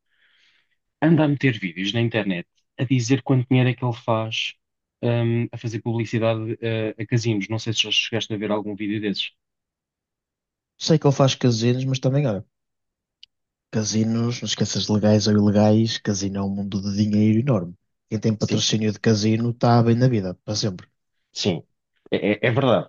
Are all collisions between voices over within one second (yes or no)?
yes